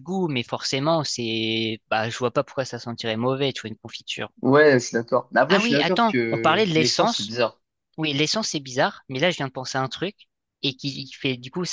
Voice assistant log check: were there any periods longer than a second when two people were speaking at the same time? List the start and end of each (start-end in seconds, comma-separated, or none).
5.5-7.3